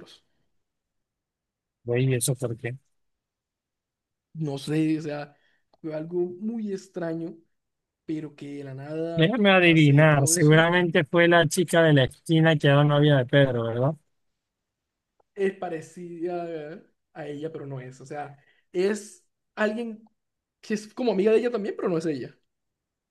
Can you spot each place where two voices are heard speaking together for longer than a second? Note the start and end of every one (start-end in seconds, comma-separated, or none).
9.1-10.7